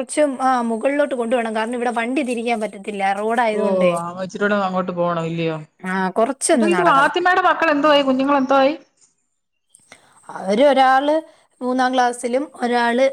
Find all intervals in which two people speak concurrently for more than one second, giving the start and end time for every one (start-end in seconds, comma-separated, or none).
none